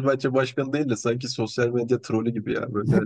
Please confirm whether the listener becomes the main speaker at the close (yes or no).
yes